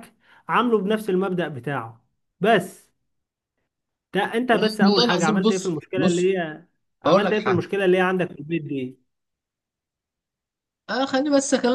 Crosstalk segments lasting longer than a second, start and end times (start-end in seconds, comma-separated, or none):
4.8-6.3